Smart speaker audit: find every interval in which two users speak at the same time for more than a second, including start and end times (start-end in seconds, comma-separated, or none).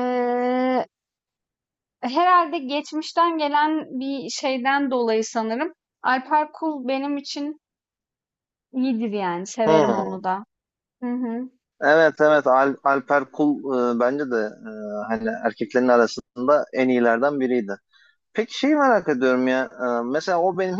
none